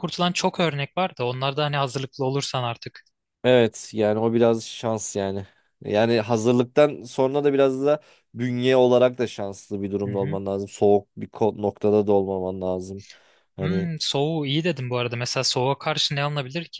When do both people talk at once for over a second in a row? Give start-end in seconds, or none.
none